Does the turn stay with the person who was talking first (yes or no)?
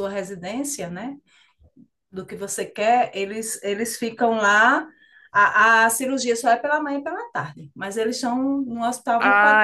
no